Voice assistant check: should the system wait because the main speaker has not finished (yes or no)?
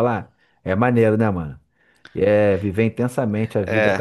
no